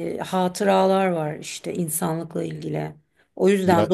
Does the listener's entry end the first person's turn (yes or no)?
no